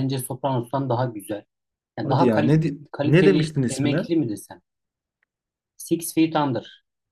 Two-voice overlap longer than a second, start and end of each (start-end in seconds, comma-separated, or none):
2.0-4.1